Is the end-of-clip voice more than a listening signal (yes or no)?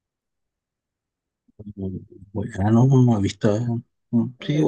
no